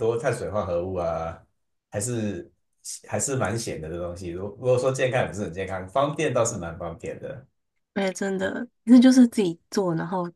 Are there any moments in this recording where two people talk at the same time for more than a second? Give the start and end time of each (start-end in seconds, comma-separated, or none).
none